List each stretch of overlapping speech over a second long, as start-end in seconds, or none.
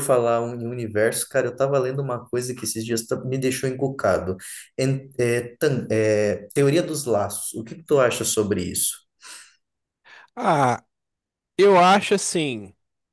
none